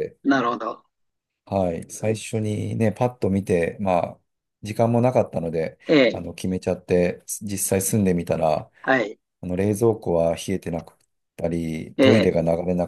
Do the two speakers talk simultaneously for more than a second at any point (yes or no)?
no